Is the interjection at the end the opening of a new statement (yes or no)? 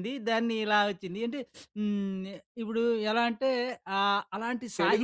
yes